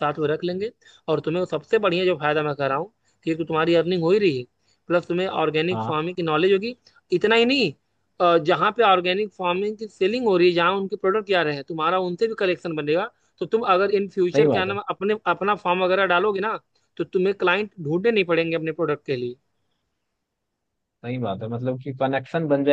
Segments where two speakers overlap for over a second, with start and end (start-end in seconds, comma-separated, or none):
none